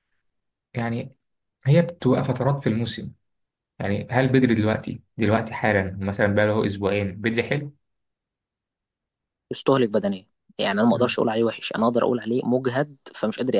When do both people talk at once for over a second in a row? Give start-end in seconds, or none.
none